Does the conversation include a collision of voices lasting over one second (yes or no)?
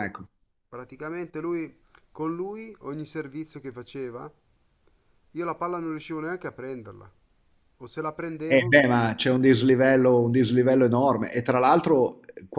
no